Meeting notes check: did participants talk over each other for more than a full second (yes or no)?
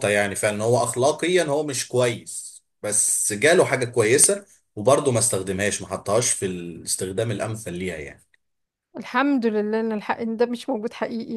no